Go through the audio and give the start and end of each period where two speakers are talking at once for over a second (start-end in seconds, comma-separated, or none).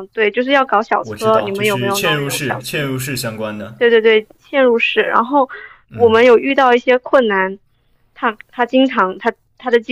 1.0-2.7